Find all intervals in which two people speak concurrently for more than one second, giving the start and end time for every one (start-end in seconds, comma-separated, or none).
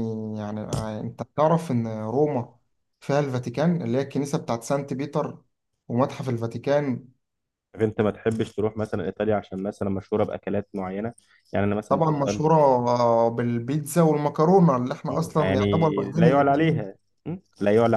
15.1-16.9